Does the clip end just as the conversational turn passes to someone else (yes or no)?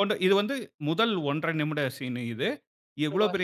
no